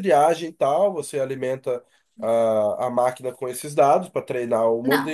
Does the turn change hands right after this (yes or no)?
yes